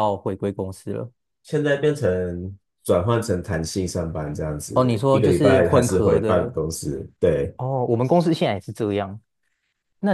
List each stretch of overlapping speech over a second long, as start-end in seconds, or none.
4.7-6.5